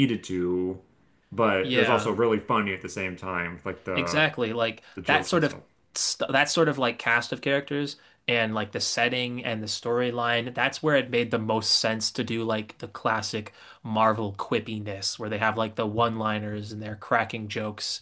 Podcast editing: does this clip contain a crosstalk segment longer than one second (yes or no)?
no